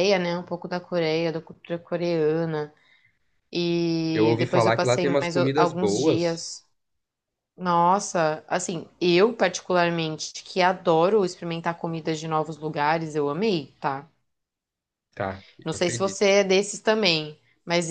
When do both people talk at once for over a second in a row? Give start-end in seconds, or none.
4.1-6.4